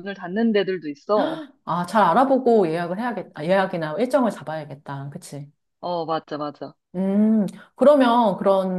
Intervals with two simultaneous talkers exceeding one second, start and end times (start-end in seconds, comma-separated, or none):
none